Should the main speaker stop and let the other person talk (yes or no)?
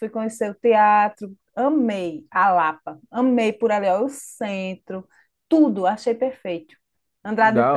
yes